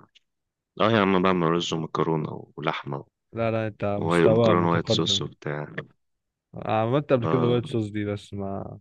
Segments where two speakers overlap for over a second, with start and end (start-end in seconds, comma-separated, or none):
4.0-5.3